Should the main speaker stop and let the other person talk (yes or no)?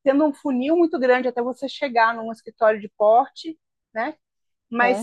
no